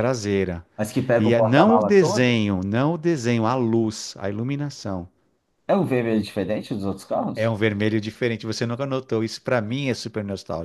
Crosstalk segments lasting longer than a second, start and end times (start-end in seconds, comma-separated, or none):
1.2-2.4